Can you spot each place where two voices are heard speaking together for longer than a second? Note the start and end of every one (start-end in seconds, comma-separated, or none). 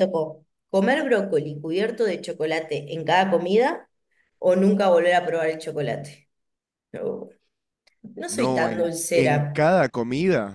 8.3-9.6